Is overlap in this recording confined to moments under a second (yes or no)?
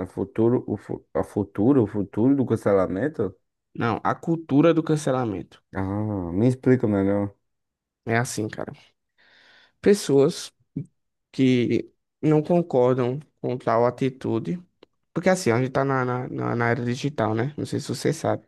yes